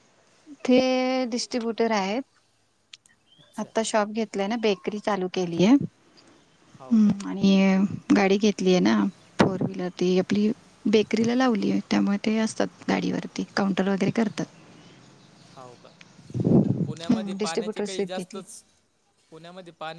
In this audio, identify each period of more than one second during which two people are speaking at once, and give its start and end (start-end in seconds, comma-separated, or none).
17.1-18.4